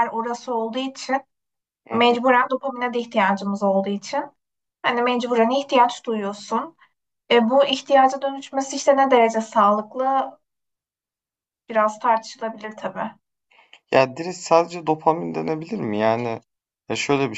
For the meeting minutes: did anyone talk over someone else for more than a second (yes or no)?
no